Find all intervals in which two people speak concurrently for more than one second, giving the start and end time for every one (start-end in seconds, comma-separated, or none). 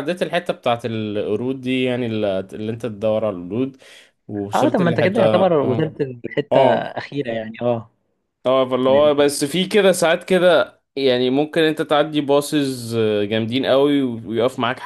4.5-5.9